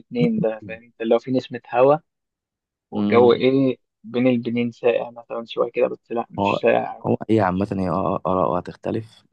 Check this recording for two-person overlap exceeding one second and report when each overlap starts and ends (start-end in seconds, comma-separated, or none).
none